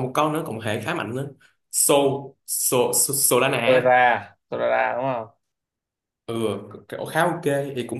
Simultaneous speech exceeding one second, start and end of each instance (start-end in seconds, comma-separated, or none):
none